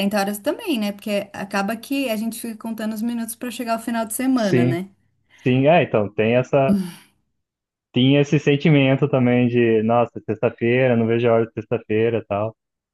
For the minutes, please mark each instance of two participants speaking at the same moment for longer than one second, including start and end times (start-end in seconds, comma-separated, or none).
none